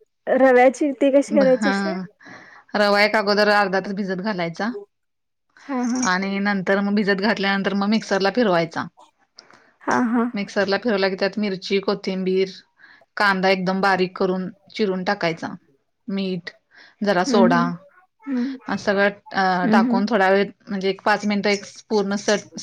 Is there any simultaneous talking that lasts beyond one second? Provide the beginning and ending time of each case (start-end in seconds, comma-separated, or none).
none